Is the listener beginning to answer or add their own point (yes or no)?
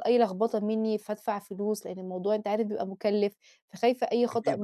no